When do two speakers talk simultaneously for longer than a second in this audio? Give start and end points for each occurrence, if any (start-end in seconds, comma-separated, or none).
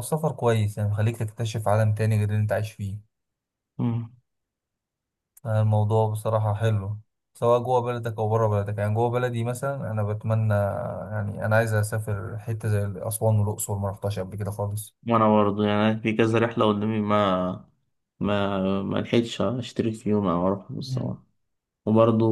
none